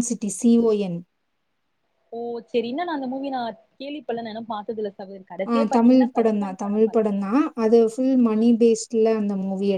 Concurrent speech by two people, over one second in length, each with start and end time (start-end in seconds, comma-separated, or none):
5.5-7.1